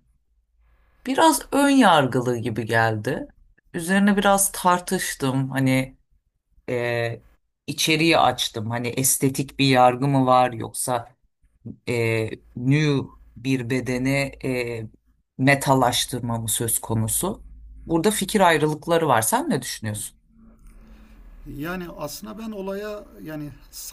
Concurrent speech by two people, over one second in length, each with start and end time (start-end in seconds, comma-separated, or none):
none